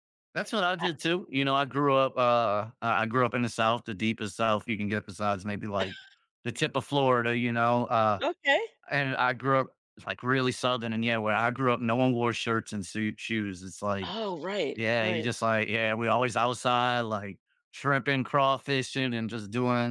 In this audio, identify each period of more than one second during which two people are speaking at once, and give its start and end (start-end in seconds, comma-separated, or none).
none